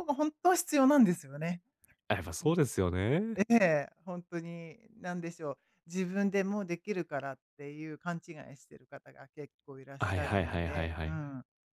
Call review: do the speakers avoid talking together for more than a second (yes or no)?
no